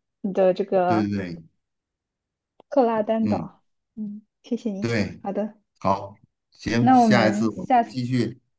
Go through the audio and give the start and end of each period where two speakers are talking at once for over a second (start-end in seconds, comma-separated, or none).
6.8-8.0